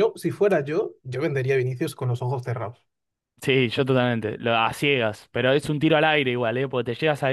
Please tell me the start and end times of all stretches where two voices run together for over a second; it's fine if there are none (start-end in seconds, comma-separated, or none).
none